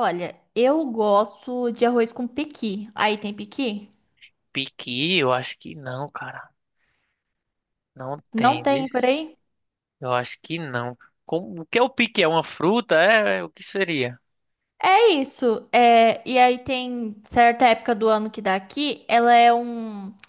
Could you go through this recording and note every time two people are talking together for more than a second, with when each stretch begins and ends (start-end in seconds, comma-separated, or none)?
none